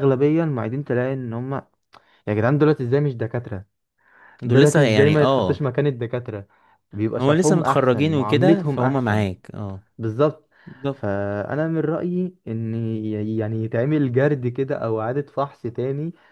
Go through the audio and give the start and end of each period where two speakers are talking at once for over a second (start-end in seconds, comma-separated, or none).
4.4-5.7, 7.2-9.3